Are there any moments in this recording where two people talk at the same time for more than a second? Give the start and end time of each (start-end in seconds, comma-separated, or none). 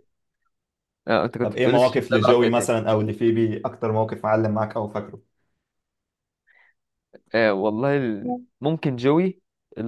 1.4-2.7